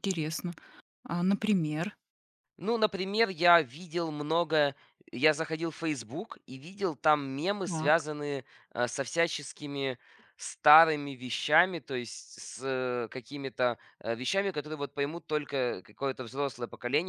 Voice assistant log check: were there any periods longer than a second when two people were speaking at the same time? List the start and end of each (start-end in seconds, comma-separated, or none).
none